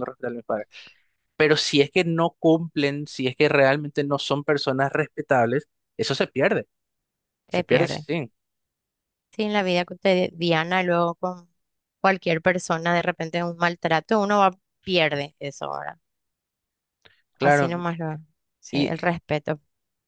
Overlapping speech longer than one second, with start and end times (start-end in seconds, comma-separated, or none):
none